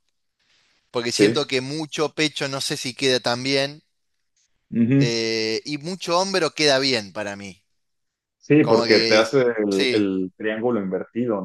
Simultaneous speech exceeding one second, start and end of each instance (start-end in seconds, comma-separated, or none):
8.6-10.1